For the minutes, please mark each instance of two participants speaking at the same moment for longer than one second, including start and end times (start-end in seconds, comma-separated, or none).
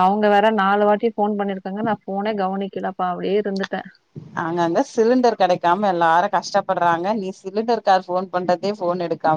none